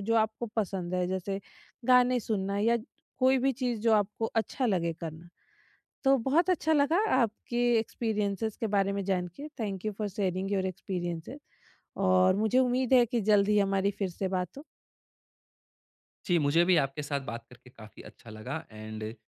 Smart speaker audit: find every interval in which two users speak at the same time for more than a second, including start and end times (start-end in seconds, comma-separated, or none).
none